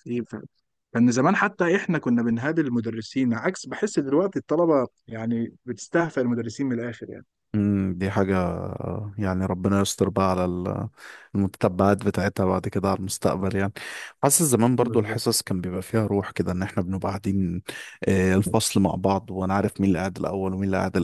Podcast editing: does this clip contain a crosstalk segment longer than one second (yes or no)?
no